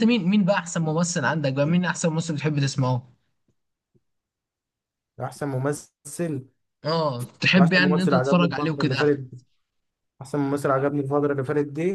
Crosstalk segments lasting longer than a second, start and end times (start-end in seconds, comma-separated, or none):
7.6-9.1